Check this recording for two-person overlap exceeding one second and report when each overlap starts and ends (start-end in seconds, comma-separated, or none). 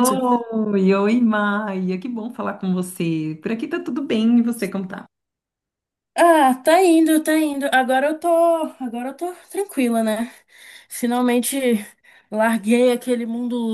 none